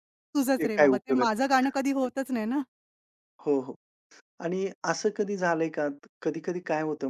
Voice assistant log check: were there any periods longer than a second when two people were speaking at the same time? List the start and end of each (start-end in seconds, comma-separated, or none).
0.6-2.1